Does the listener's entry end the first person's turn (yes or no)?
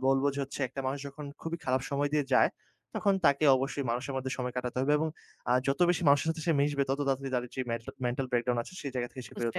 yes